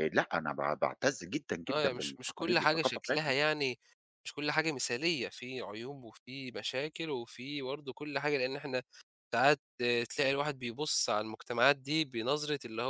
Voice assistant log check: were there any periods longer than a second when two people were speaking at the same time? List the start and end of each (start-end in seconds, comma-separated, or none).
1.7-3.3